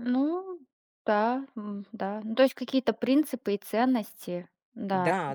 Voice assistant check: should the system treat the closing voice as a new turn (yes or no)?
yes